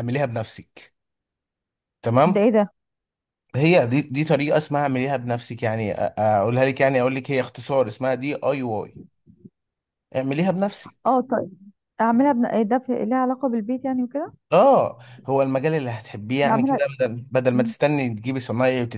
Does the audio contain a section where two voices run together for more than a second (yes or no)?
no